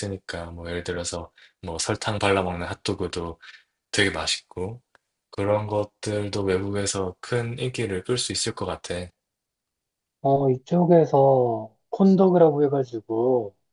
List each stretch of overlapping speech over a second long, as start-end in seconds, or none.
none